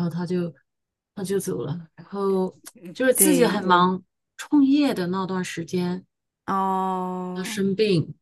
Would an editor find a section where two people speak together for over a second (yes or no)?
no